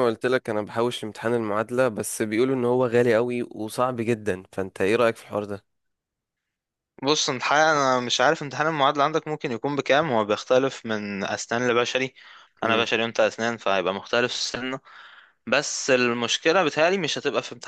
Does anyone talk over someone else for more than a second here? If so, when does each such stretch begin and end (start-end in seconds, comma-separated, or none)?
none